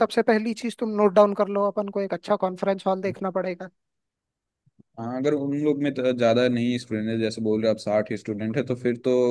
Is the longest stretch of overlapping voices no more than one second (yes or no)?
yes